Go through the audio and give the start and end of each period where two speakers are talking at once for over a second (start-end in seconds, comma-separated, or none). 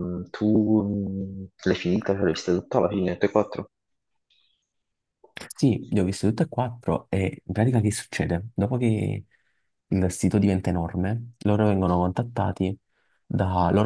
none